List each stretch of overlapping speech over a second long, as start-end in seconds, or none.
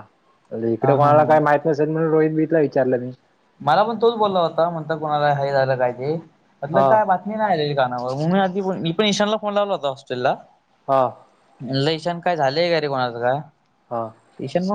none